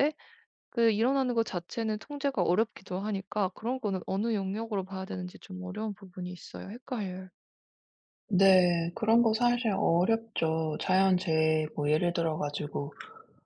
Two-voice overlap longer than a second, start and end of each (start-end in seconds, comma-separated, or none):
none